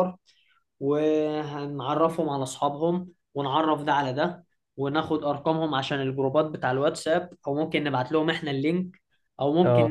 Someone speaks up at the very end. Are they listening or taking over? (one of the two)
listening